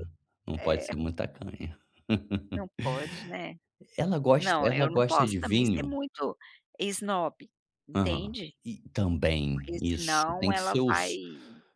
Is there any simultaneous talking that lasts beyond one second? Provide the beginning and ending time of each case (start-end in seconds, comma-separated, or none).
4.4-5.9, 9.5-10.9